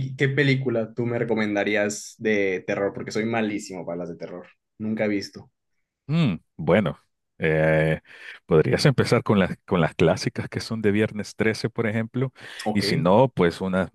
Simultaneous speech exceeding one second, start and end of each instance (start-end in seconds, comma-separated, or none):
none